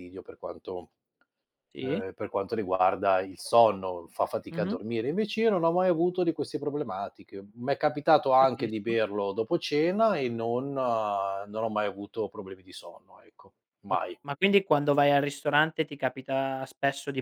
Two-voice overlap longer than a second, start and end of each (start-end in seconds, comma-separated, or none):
none